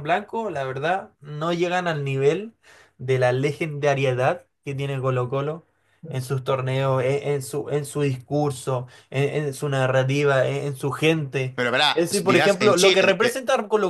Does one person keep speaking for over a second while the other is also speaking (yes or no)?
yes